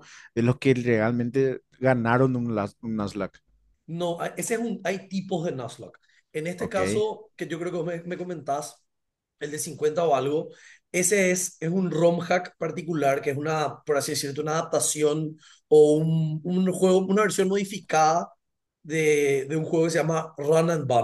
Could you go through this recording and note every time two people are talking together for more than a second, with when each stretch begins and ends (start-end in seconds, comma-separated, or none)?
none